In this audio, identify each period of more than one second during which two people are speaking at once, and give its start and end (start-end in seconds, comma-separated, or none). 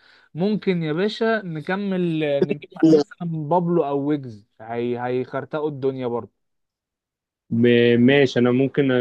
none